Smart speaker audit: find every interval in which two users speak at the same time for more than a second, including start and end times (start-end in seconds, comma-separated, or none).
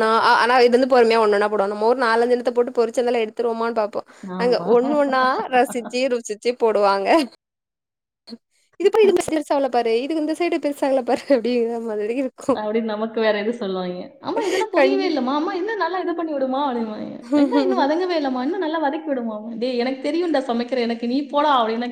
none